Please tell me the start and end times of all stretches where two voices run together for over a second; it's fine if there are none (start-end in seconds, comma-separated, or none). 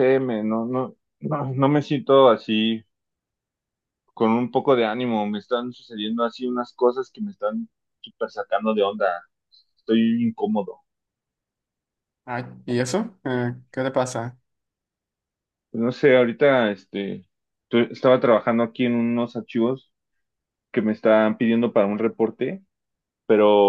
none